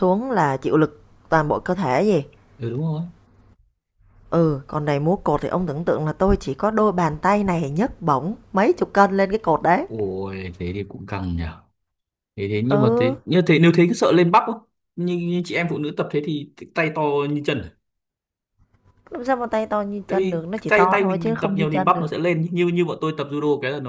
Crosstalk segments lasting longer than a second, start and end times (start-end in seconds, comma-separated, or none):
20.1-22.1